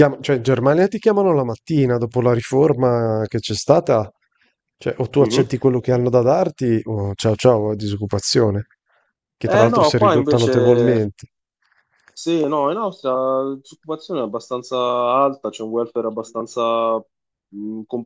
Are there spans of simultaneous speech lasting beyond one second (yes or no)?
yes